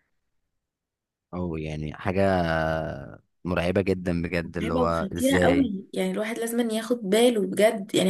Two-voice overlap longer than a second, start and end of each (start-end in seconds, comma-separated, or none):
4.4-5.7